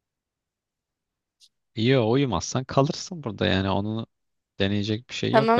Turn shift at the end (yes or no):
yes